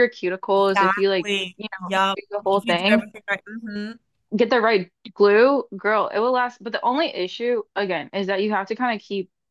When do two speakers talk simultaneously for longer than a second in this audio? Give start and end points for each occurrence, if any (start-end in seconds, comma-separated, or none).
0.6-3.1